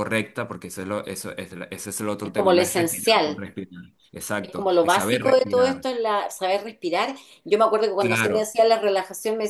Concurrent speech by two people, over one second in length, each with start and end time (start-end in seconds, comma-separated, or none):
2.2-3.4, 4.4-5.8